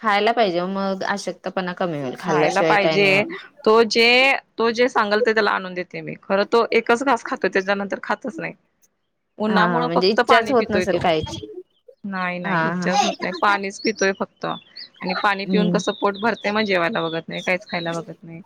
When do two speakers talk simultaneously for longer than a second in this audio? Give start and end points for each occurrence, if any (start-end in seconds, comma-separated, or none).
9.5-11.0